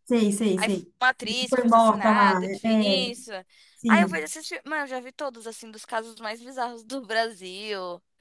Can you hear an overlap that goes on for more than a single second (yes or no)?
yes